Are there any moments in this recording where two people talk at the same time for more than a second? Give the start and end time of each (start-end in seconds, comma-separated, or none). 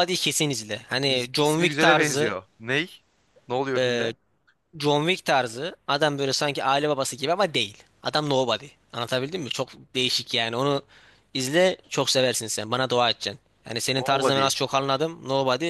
1.1-2.4